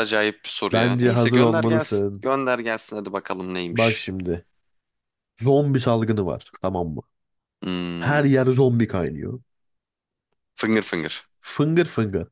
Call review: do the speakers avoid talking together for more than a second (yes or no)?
no